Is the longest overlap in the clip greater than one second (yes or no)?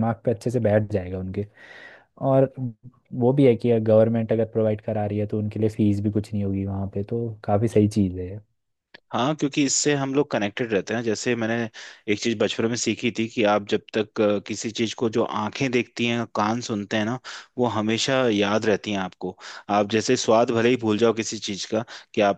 no